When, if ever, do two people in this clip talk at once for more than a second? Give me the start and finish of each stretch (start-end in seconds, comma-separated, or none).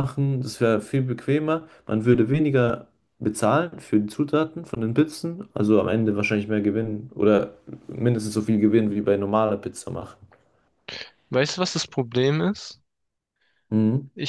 none